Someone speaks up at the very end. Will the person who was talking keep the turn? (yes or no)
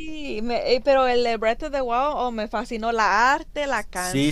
no